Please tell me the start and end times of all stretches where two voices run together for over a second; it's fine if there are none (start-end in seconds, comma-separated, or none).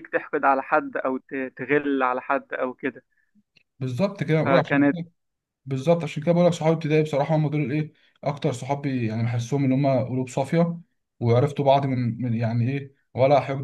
none